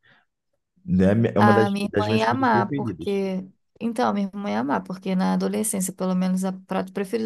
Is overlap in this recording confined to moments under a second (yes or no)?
no